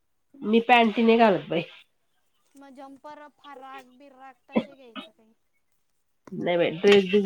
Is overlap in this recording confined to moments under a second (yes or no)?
yes